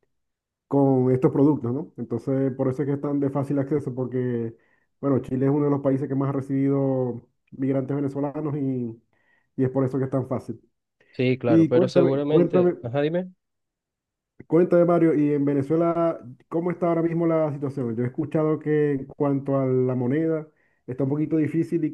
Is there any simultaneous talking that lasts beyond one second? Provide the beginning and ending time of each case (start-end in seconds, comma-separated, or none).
11.5-12.8